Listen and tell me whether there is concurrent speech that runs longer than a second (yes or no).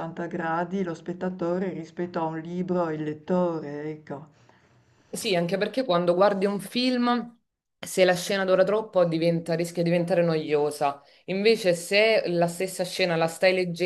no